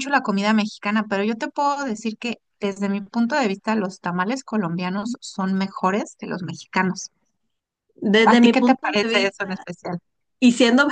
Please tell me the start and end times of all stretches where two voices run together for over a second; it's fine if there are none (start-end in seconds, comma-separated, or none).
8.2-9.7